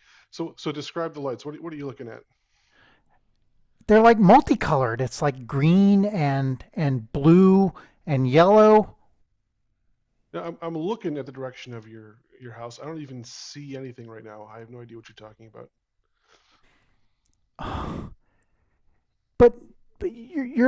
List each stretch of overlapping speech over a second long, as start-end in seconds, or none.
none